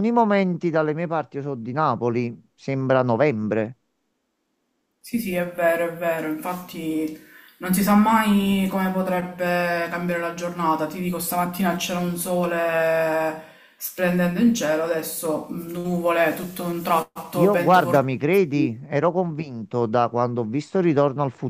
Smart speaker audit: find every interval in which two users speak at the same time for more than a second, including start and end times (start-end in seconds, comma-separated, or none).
17.3-18.9